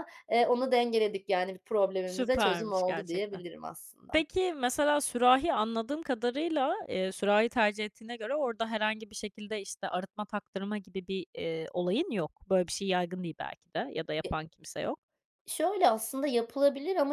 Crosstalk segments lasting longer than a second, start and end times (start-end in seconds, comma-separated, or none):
2.1-3.4